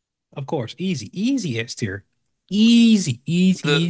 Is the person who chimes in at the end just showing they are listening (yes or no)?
no